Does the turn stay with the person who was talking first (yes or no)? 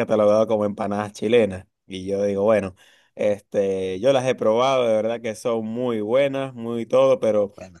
yes